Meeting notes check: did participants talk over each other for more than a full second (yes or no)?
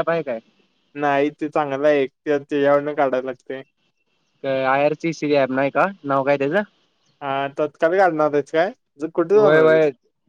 no